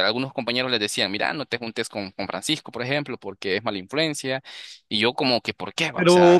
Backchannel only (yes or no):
no